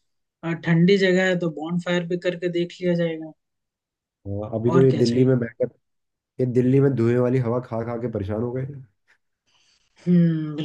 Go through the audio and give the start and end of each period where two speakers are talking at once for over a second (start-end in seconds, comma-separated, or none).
none